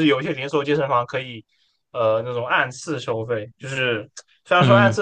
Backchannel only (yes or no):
yes